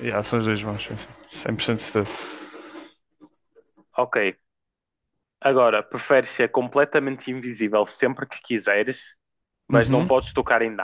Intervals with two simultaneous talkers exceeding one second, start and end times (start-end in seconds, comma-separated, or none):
none